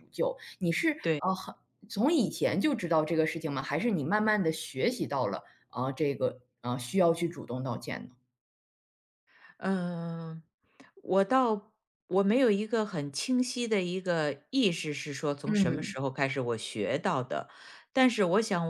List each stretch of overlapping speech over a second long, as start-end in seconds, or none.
none